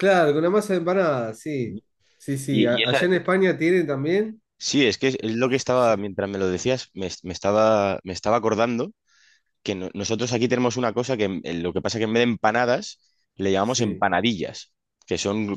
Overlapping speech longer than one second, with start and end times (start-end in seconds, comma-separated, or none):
none